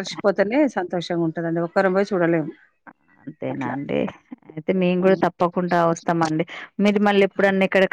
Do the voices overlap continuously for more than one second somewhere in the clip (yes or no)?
no